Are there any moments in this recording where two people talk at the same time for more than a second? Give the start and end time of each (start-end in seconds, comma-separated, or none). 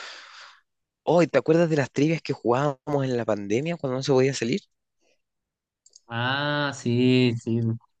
none